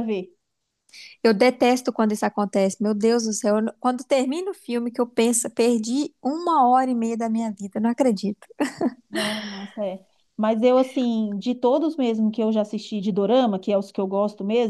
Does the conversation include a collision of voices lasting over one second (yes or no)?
no